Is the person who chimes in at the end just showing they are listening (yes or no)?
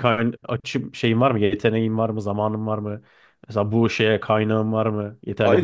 no